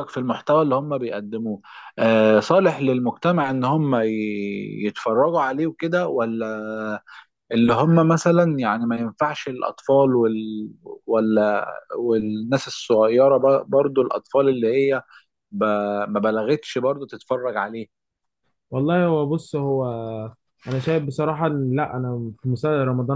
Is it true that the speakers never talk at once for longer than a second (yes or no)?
yes